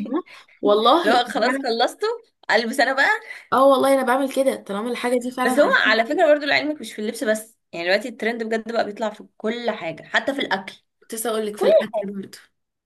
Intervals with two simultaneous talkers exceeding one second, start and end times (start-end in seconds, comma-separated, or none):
none